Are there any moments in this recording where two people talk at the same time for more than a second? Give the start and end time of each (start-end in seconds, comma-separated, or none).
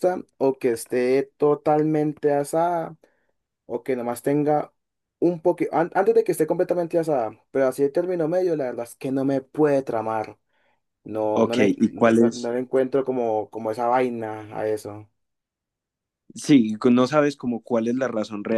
11.3-12.5